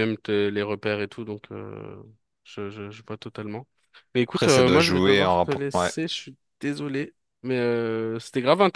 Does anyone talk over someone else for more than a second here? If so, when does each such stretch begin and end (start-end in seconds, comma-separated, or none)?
4.3-5.9